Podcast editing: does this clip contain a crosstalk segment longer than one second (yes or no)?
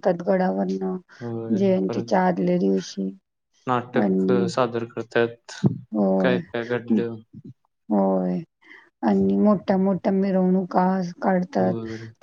no